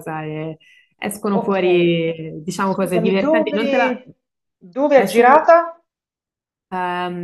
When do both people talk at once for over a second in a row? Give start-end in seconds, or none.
2.6-4.0